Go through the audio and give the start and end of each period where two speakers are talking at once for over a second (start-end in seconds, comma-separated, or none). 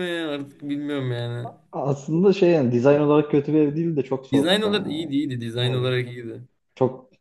none